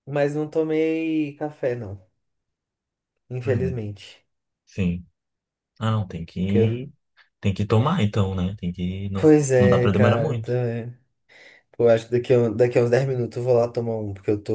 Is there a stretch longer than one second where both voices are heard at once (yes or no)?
yes